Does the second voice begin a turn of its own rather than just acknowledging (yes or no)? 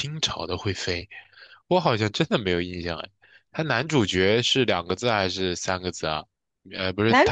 no